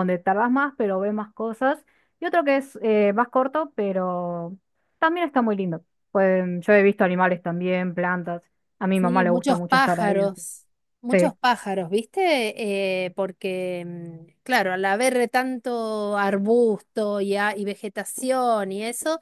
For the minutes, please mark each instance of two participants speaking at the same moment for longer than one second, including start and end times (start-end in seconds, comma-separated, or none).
8.9-10.4